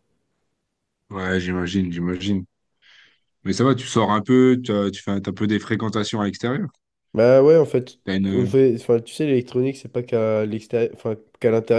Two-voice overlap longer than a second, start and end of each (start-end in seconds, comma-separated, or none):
none